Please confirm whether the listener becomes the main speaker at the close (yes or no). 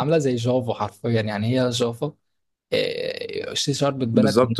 yes